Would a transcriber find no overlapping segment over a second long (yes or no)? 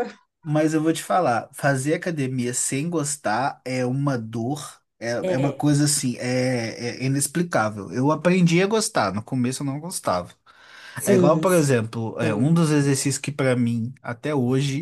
no